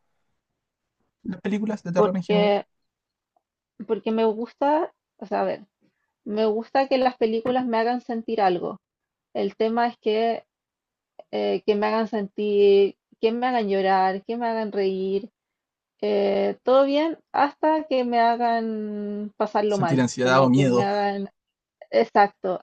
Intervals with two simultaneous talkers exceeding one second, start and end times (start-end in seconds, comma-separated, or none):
19.7-20.9